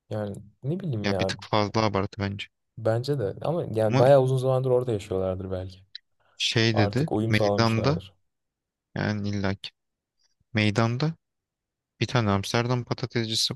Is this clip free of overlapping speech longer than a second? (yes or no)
no